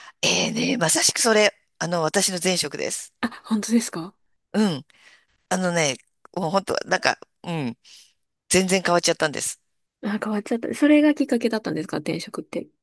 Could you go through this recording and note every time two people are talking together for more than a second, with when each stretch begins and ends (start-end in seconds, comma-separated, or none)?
none